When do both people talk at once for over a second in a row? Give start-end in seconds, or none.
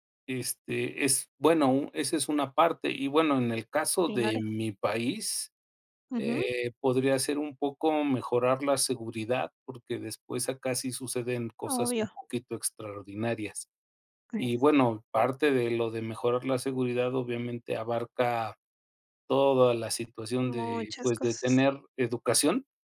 20.4-21.6